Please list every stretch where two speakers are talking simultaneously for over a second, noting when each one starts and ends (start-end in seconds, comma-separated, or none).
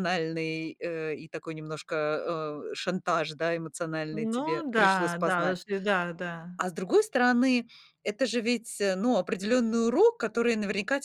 4.1-5.6